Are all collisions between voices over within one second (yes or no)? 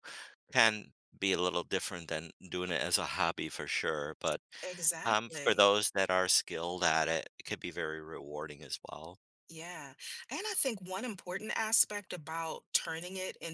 yes